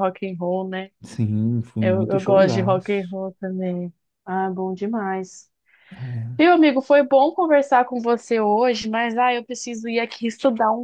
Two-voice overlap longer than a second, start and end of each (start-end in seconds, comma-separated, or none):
1.8-3.1